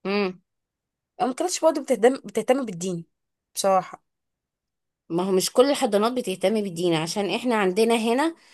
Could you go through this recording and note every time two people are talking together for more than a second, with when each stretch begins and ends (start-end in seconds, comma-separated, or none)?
none